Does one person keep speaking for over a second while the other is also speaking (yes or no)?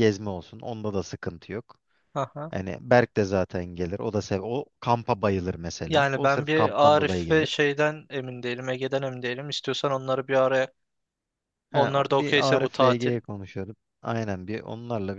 yes